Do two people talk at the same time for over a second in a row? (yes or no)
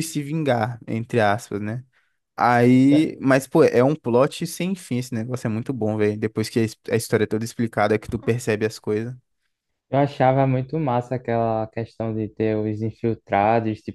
no